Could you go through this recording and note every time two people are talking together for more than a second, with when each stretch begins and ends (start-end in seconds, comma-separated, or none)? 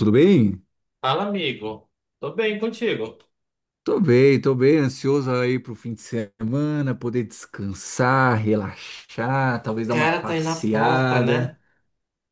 9.9-11.6